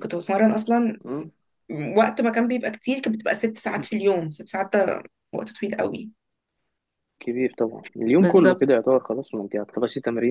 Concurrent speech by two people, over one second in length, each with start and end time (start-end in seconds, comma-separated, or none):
none